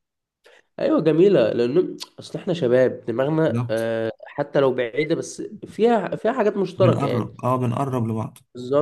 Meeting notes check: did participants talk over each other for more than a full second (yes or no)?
no